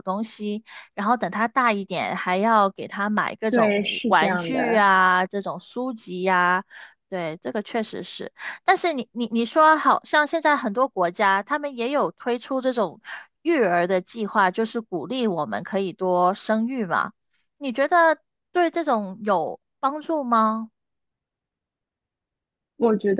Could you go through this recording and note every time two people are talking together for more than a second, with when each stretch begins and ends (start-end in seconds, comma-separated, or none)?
3.5-4.9